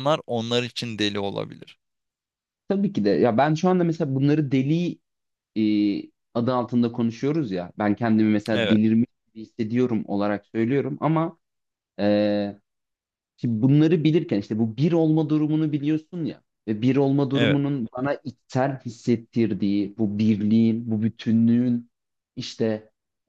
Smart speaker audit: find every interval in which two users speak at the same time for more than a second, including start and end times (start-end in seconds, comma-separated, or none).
none